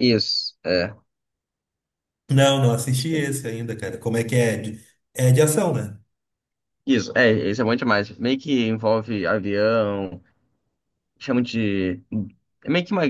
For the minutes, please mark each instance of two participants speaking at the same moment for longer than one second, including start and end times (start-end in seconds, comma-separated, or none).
none